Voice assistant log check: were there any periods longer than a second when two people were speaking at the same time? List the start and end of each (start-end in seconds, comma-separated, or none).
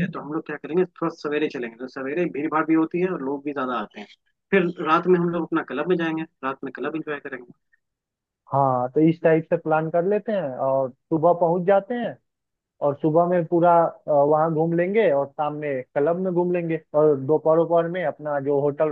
none